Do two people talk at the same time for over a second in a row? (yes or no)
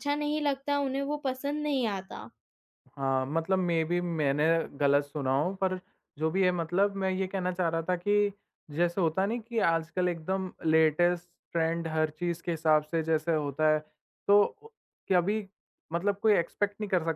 no